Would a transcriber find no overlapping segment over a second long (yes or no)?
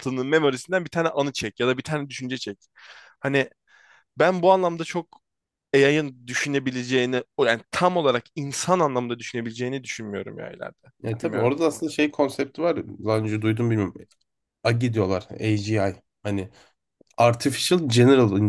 yes